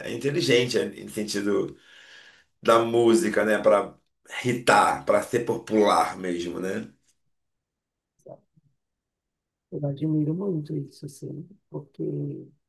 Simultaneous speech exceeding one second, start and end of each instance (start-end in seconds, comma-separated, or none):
none